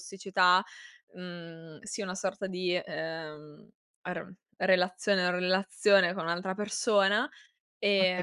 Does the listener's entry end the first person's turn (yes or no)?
yes